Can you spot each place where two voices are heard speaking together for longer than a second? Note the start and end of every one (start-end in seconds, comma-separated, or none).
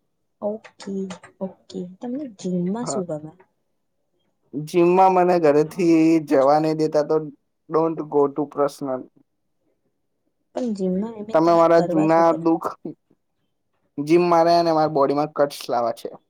none